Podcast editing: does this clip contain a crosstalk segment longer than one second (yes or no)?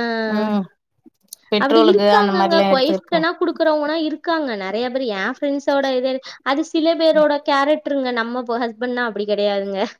yes